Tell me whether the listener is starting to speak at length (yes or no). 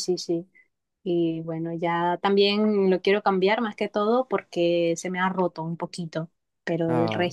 no